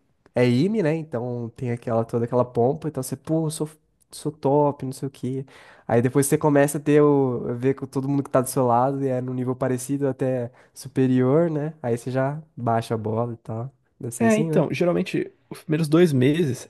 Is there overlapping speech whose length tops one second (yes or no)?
no